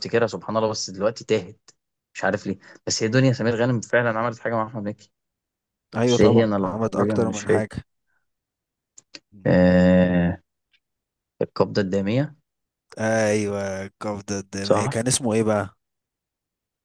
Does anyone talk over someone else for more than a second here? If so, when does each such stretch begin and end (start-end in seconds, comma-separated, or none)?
6.1-7.8